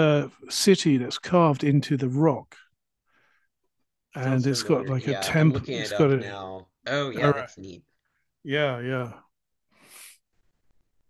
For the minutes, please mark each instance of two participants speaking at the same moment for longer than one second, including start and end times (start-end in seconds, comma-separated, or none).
4.2-6.3